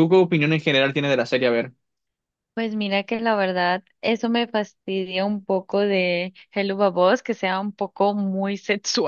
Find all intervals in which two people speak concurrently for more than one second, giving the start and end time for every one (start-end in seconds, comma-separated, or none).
none